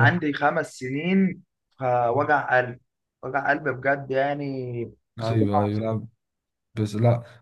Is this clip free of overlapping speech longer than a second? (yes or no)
yes